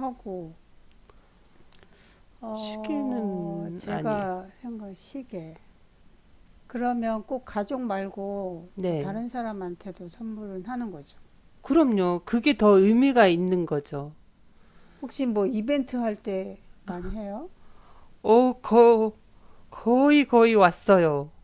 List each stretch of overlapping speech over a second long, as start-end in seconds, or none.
2.5-4.3